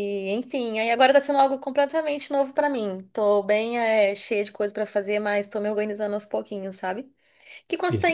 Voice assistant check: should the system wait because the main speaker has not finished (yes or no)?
yes